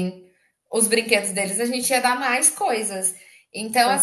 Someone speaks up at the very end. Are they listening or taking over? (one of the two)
listening